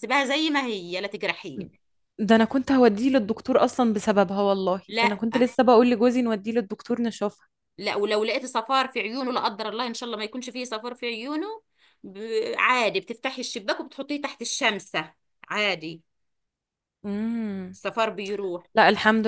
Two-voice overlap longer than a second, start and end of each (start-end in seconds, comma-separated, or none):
none